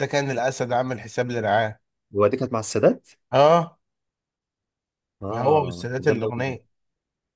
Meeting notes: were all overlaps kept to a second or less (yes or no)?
no